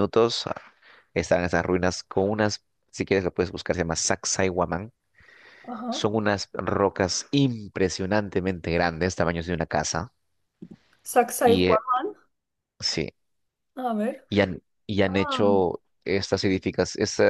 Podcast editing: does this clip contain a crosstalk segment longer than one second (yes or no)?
no